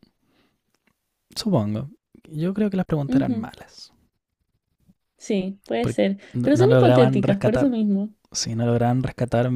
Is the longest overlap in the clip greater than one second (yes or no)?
yes